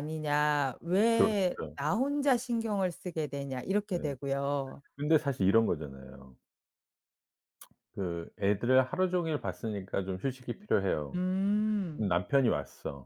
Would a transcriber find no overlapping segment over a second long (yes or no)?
yes